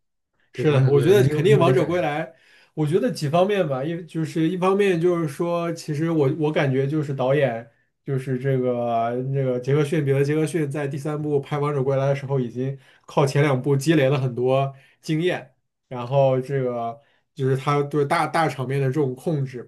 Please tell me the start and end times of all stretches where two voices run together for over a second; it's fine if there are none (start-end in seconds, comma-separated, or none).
0.5-2.0